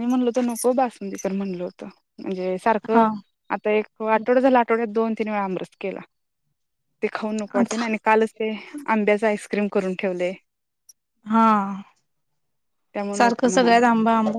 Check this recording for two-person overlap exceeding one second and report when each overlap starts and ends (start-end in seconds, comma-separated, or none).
none